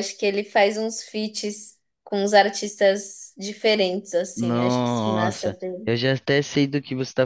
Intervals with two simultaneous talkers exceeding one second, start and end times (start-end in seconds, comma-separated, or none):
4.3-5.9